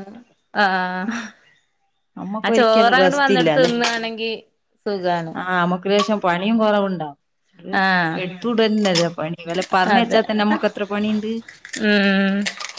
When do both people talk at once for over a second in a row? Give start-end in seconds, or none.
2.5-3.7